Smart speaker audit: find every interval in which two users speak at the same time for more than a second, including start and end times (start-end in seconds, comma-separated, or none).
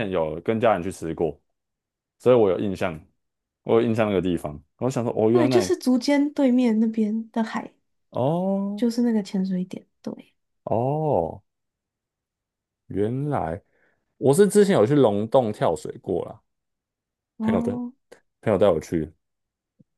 none